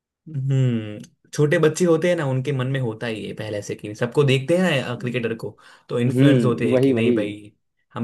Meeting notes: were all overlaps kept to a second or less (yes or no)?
no